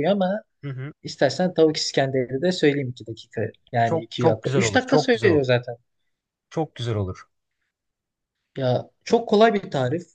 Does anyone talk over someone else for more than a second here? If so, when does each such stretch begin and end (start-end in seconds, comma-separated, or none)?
3.8-5.5